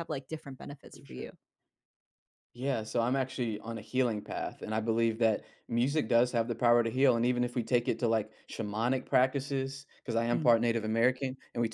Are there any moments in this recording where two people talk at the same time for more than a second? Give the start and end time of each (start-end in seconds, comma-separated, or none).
none